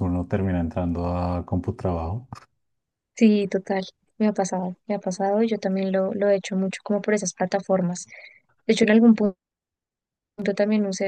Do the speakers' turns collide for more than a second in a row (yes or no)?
no